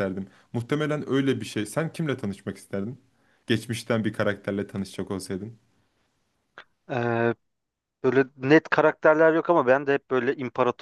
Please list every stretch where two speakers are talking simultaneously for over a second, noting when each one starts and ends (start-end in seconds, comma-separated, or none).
none